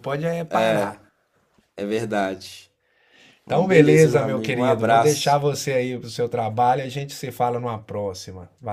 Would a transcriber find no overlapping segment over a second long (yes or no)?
no